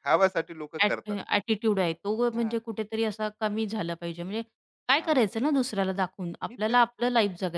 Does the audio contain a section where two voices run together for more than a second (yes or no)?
no